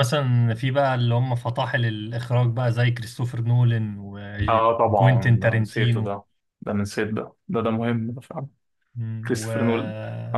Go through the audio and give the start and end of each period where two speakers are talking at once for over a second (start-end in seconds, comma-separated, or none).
4.5-6.1